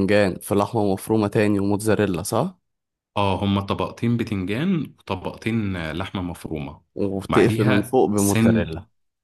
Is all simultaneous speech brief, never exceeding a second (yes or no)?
no